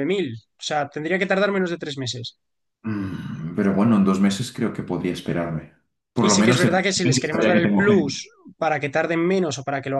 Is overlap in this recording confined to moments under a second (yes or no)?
no